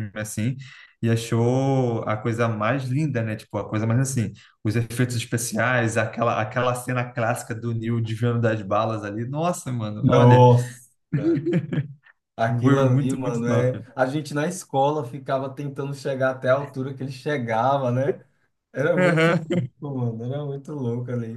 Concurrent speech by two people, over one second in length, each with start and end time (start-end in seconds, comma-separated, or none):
12.5-13.8